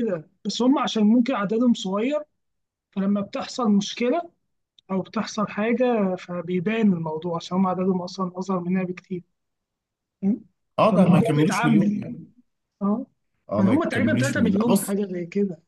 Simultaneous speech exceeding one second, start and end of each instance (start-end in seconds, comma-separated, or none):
10.9-12.2, 13.6-14.9